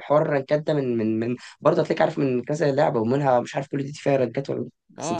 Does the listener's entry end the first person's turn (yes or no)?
yes